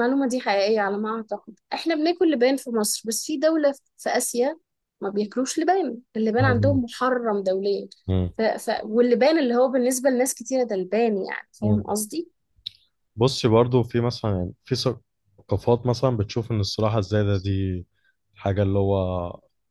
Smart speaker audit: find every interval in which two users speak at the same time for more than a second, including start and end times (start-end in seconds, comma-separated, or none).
none